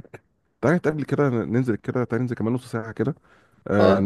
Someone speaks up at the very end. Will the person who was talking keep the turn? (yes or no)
yes